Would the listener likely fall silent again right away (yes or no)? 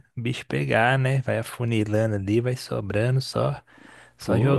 no